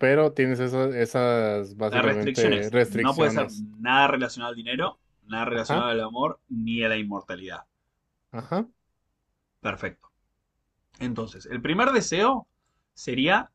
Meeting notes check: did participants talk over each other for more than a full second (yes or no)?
yes